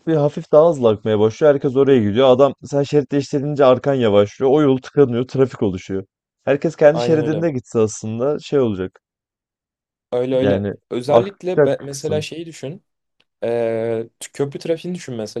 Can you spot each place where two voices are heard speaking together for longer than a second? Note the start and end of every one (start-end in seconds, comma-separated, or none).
10.4-12.2